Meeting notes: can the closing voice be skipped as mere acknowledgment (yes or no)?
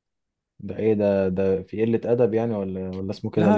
no